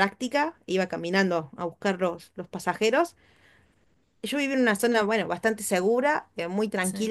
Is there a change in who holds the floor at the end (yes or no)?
no